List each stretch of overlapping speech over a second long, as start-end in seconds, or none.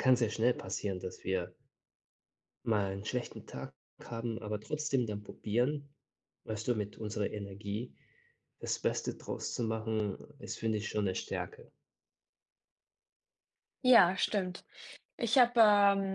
none